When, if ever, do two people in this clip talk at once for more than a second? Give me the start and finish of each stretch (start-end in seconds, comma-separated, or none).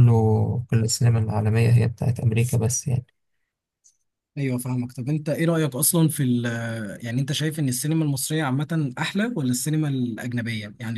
none